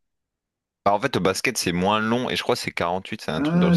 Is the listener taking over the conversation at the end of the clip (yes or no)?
yes